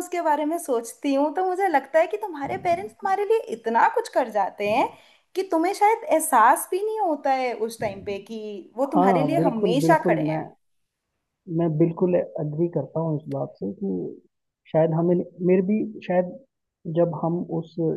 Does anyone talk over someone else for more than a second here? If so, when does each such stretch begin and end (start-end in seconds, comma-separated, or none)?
8.9-10.4